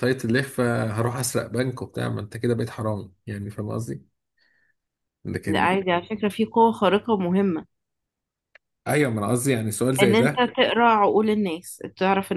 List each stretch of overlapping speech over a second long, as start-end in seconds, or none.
none